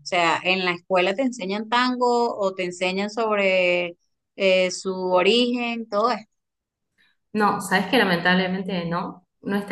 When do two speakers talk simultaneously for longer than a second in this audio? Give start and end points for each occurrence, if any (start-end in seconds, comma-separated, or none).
none